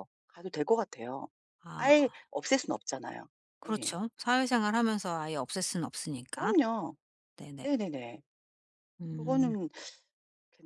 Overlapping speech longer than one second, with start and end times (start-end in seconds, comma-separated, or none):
none